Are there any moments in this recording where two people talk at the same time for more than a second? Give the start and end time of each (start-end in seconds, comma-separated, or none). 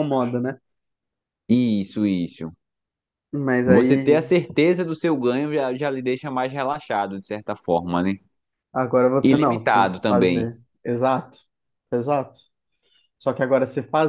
9.2-10.5